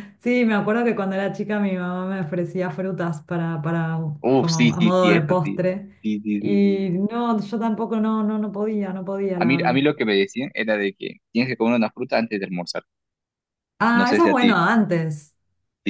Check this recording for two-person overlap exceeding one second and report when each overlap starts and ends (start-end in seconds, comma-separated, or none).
4.4-5.6